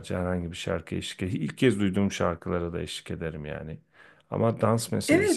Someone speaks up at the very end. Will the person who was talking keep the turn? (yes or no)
no